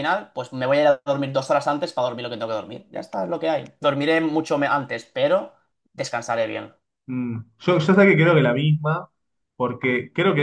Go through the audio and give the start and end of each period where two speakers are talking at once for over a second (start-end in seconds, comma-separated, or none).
none